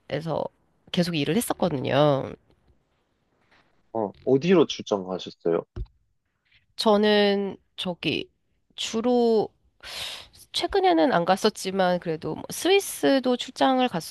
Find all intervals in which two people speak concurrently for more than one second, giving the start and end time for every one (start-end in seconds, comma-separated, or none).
none